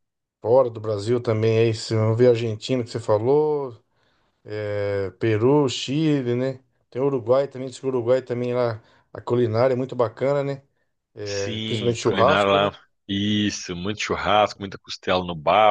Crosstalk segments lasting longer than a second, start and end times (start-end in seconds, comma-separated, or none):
11.2-12.7